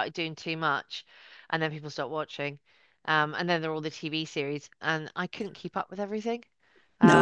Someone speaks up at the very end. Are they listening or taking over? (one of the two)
taking over